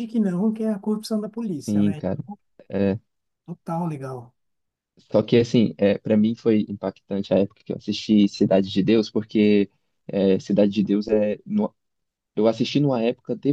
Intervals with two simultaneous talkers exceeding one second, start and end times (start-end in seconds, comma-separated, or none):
none